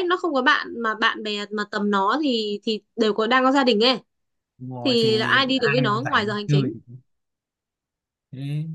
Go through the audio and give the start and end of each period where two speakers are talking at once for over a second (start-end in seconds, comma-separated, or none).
4.8-6.7